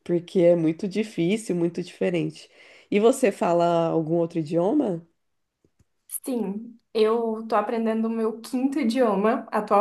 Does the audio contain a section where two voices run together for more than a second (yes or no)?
no